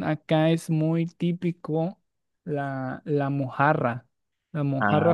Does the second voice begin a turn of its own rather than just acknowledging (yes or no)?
no